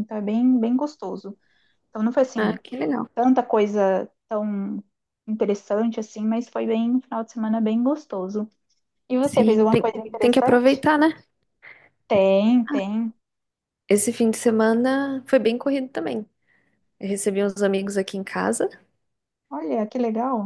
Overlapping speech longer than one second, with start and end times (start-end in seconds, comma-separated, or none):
9.3-10.8